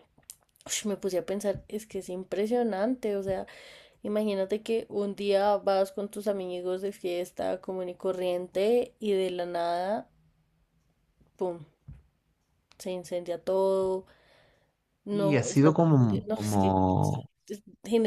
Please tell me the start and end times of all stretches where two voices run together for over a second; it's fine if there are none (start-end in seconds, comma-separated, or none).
15.1-17.3